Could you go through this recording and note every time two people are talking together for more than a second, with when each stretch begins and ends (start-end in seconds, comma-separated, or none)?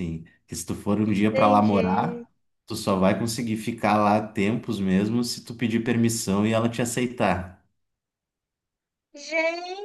1.1-2.3